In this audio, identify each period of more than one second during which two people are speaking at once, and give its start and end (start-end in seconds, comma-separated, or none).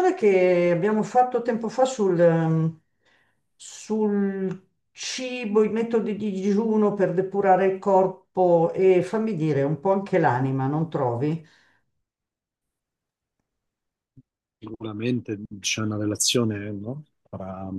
none